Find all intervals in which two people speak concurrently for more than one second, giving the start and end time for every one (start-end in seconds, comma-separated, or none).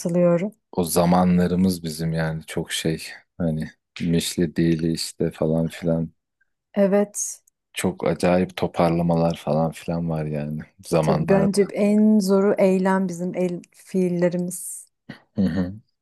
none